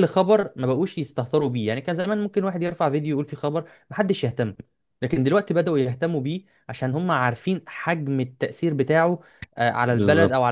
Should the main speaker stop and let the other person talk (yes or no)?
yes